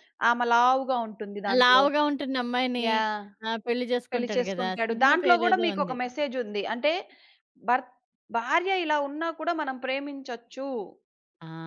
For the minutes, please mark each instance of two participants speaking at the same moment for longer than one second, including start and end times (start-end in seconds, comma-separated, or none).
4.1-6.0